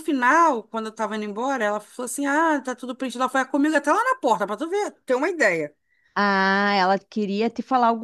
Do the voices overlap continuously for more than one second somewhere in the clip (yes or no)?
no